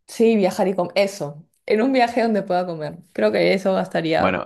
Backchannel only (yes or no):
no